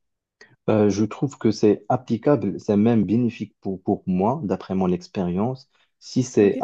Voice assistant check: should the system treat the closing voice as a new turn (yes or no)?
no